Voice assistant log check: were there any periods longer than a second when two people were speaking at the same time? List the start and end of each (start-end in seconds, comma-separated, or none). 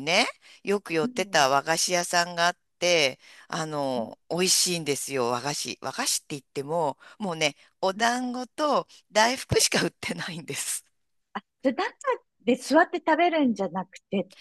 none